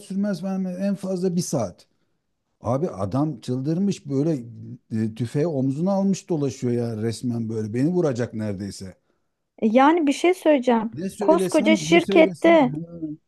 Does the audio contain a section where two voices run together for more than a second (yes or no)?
yes